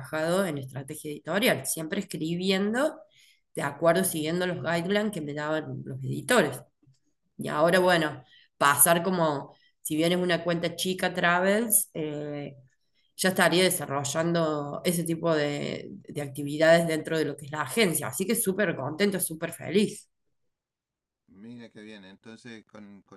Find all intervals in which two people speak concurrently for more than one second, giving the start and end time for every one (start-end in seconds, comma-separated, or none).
none